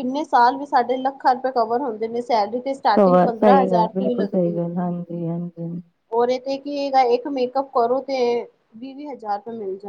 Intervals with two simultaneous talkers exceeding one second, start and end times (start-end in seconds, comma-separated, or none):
3.0-4.8